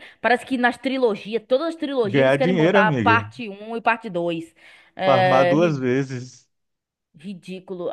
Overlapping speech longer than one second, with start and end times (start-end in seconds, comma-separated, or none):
2.0-3.2